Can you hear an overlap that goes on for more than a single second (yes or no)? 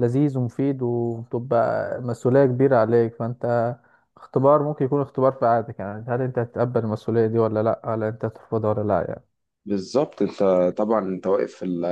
no